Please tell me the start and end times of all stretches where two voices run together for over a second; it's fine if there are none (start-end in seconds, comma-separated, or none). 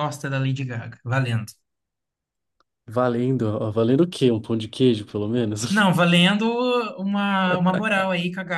none